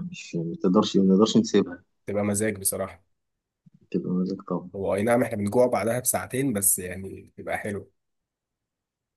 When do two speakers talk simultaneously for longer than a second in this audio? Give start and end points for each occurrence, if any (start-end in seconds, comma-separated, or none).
none